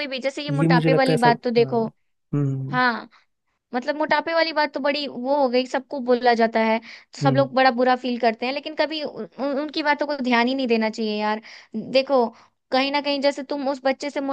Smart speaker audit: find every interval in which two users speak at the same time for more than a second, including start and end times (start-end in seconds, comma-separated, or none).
0.6-1.8